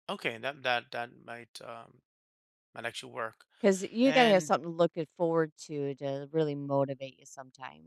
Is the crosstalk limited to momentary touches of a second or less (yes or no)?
yes